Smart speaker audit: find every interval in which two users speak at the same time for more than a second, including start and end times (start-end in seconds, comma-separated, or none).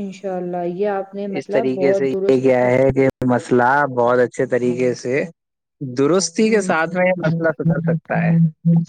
1.4-2.7